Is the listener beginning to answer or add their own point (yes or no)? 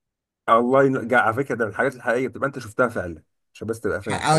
yes